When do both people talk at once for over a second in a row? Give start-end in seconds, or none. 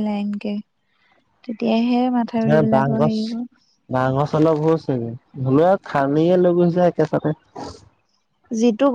none